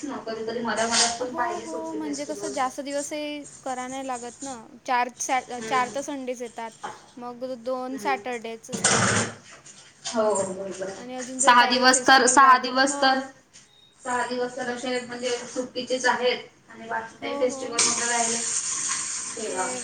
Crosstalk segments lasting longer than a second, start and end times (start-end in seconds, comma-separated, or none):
10.9-12.9